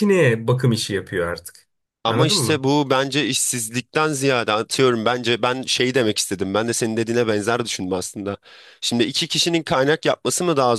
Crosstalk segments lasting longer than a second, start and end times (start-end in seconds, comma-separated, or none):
none